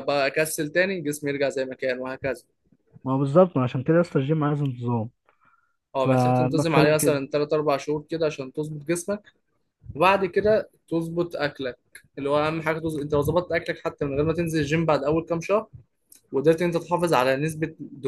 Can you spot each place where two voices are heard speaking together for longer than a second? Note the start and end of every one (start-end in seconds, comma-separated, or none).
6.0-7.2